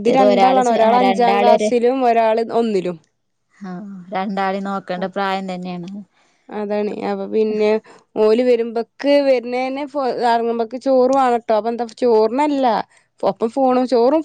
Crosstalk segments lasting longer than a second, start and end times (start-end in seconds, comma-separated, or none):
none